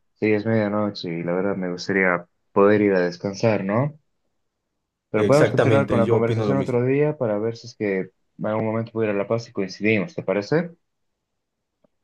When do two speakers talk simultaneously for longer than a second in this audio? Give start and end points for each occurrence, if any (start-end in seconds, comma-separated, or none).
5.2-6.8